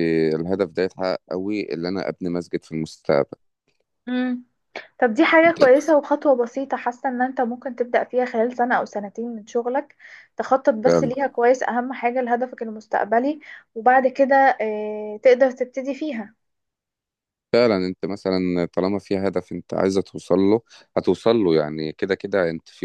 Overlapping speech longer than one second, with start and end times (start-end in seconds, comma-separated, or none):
none